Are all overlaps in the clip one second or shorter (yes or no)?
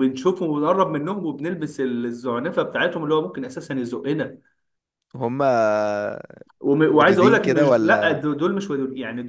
no